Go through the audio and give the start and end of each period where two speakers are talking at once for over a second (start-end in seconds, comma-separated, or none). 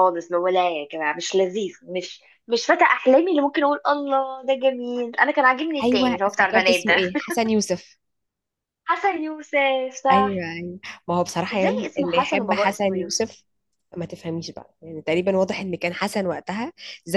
5.8-7.2, 11.5-13.3